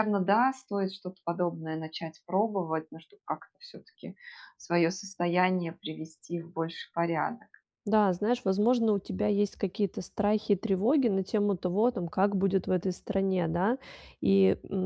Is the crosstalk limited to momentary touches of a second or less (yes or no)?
yes